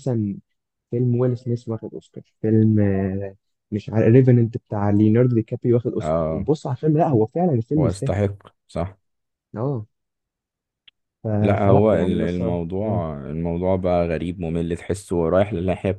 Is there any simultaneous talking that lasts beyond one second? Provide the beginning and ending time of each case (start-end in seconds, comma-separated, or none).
11.6-13.0